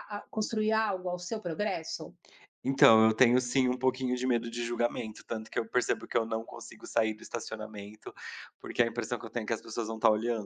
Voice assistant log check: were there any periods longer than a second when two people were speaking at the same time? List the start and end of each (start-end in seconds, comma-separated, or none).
none